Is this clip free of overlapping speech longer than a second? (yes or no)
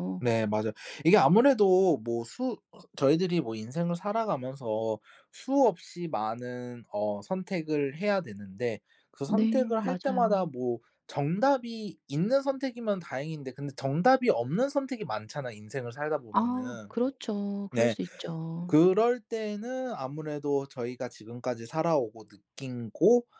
no